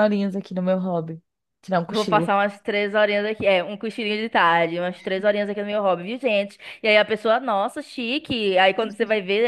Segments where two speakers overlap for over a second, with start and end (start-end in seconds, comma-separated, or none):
none